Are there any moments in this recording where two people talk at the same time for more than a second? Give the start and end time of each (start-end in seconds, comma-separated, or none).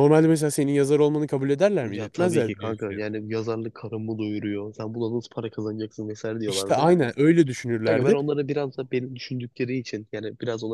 1.8-3.1